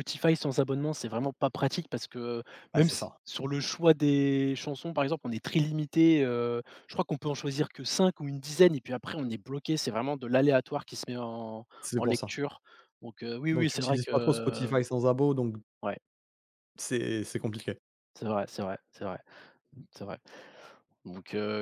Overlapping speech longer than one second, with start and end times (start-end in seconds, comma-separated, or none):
13.5-14.7